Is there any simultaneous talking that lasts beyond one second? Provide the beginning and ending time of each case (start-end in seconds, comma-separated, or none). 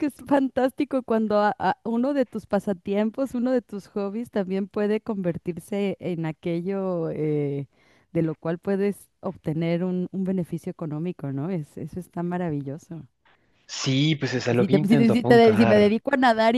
14.6-16.0